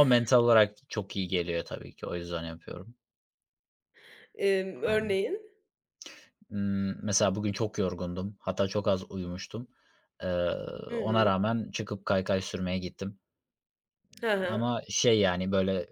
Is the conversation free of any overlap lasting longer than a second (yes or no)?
yes